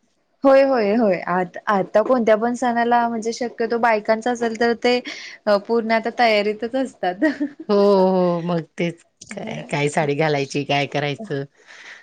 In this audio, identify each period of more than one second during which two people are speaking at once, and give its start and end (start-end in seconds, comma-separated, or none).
none